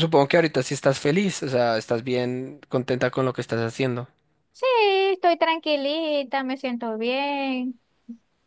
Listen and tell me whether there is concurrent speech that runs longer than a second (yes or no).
no